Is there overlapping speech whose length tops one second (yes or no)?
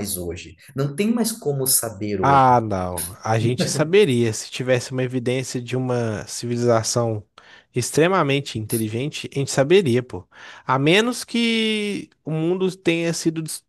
no